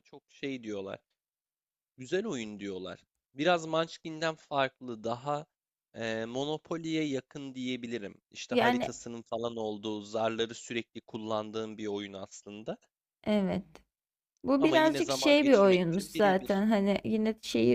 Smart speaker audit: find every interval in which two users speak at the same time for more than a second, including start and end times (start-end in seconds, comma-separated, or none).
14.6-16.6